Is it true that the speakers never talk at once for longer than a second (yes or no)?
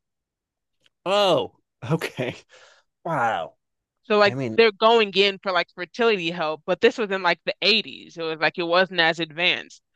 yes